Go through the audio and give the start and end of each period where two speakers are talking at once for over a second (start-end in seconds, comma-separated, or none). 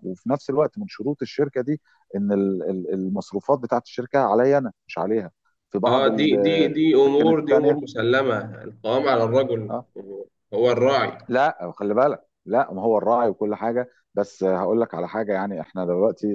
5.9-7.8